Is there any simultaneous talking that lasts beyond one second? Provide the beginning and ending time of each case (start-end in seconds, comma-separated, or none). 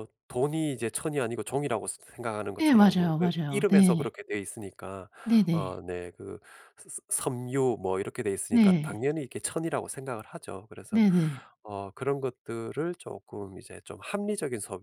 2.6-4.1